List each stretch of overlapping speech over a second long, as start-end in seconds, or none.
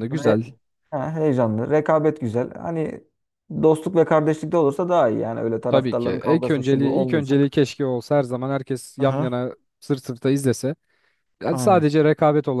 5.7-7.5